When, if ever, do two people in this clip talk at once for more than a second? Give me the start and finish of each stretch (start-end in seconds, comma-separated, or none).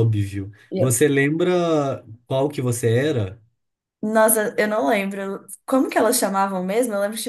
none